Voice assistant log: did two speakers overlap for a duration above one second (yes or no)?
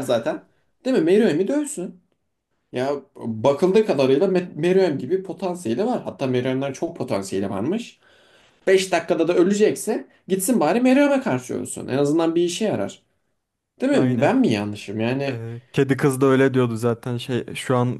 no